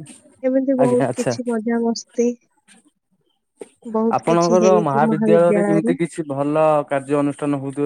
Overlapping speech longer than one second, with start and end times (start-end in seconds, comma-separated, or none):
none